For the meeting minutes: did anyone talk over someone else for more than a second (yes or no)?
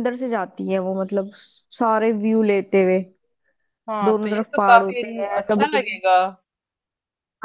yes